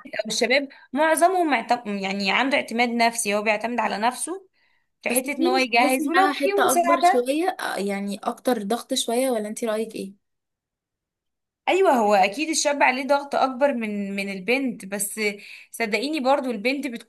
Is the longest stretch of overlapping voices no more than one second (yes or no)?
no